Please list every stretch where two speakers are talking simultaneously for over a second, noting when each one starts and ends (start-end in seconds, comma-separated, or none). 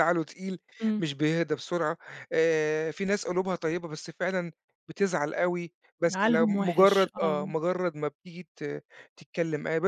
6.1-7.5